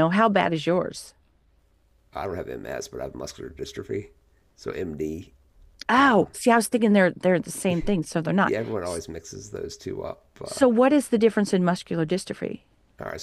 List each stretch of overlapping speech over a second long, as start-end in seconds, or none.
none